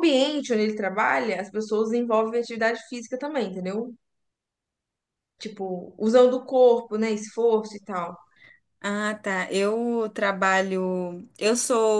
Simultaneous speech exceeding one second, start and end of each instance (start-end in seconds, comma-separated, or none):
none